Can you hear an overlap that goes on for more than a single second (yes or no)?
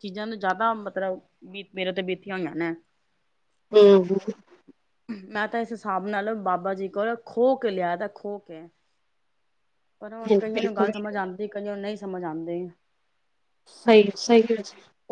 no